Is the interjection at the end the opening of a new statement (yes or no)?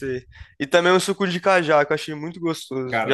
yes